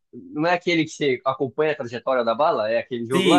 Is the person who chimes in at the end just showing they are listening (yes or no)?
no